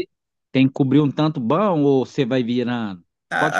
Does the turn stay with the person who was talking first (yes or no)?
no